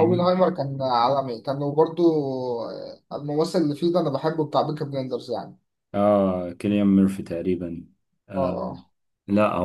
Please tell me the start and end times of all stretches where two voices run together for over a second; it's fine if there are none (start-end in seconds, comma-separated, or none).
none